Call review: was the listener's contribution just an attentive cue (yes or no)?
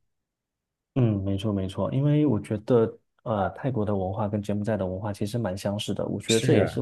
yes